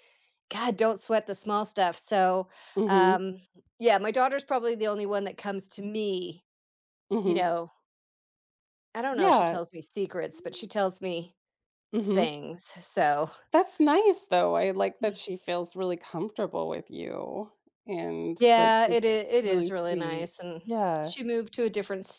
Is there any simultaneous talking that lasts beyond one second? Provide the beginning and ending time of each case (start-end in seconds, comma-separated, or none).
18.4-20.3